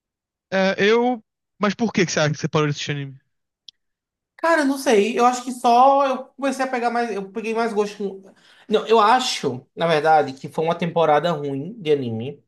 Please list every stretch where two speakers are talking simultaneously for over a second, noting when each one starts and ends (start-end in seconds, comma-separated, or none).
none